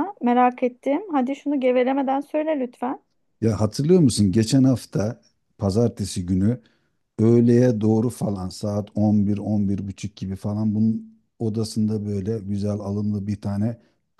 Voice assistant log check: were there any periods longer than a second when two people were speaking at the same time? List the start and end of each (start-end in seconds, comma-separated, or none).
none